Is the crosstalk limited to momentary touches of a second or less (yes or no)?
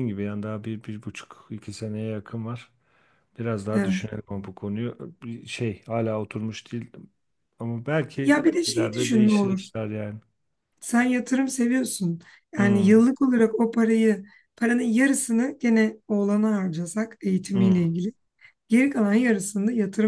no